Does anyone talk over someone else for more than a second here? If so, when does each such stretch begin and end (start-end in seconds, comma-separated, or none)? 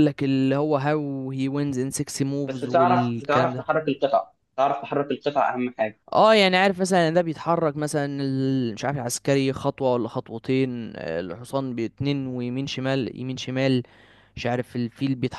2.4-3.8